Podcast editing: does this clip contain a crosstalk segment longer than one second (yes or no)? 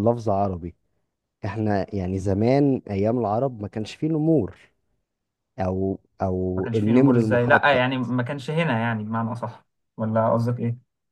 yes